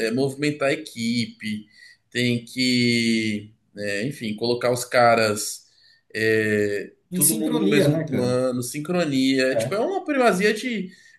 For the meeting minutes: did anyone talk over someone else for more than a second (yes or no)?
yes